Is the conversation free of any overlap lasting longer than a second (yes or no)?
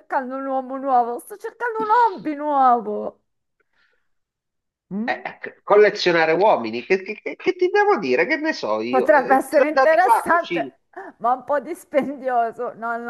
no